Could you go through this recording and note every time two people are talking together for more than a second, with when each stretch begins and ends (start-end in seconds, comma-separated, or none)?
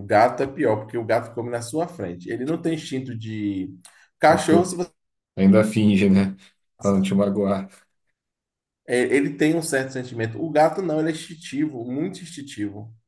none